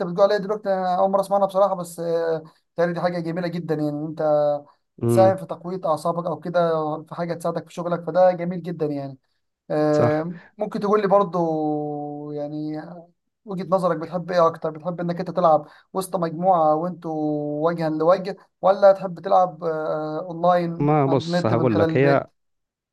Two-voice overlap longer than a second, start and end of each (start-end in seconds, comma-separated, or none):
20.8-22.2